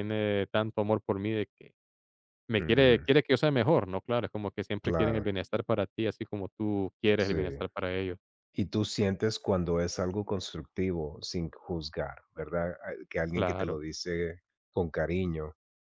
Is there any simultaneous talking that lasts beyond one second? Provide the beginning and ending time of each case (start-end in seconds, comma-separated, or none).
none